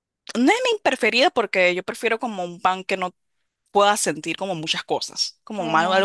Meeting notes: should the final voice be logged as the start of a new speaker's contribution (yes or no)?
no